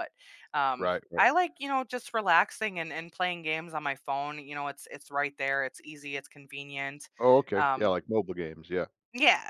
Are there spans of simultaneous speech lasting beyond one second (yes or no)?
no